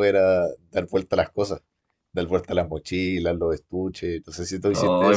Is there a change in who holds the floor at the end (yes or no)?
yes